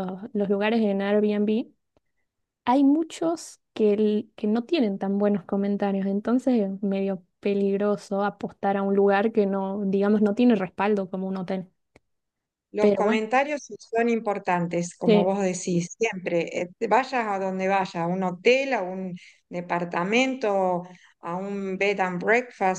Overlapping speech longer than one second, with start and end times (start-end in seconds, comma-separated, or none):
none